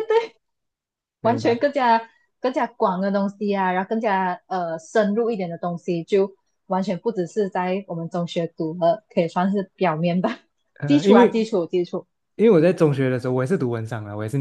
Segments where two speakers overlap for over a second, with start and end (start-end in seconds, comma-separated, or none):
none